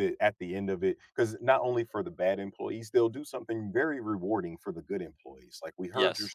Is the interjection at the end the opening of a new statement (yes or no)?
no